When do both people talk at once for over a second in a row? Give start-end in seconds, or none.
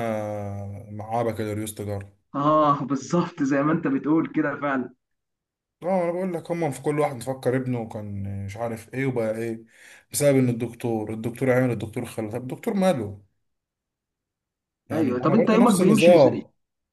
14.9-16.4